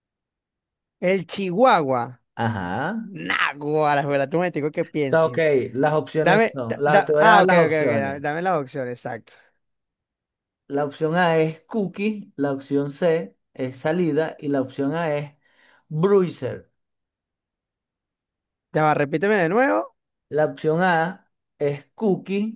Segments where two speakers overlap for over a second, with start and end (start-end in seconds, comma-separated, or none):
6.2-8.2